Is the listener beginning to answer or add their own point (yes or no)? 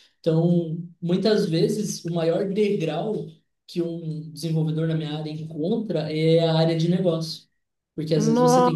no